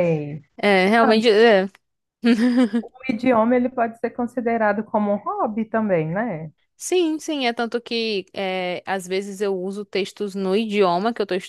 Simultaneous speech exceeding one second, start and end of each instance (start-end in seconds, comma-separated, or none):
none